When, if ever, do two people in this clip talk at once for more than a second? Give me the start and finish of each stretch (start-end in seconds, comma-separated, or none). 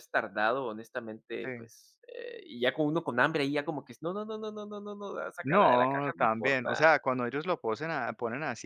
5.4-6.8